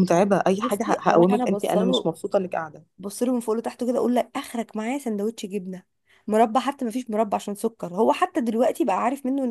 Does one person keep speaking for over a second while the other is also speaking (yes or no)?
yes